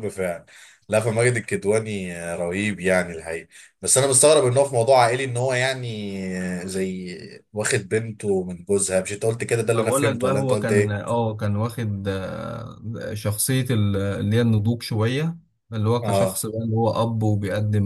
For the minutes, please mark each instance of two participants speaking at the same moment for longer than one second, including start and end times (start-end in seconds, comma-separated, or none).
9.7-11.1